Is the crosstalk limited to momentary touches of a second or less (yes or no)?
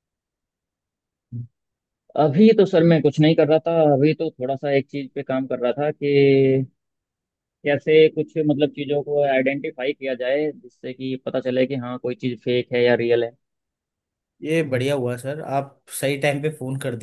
yes